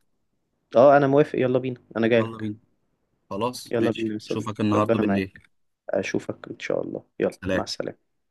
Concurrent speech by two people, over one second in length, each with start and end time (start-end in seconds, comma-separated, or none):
3.7-5.4